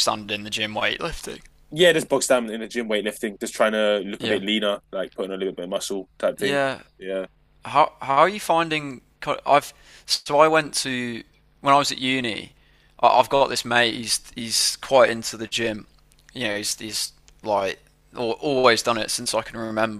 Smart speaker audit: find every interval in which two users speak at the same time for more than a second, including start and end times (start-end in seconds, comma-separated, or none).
none